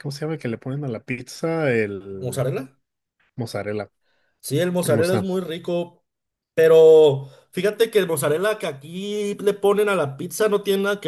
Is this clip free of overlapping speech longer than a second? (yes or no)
yes